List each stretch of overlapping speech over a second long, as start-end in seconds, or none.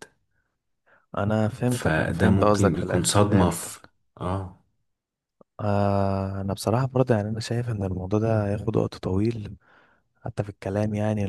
1.7-3.7